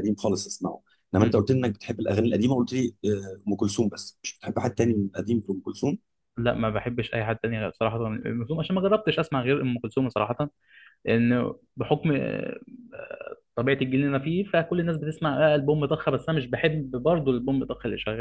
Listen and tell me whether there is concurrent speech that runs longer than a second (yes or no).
no